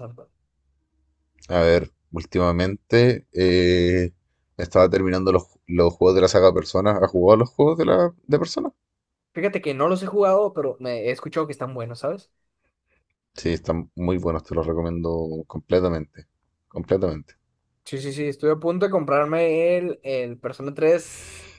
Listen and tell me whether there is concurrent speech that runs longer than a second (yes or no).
no